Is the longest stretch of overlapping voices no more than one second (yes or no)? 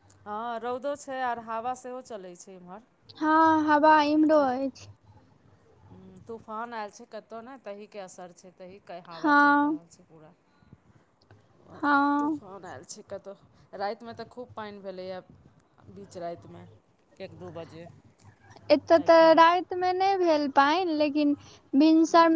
yes